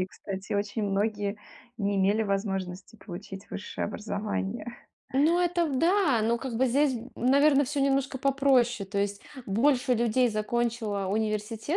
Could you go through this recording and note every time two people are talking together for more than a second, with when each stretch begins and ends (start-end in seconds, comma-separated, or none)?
none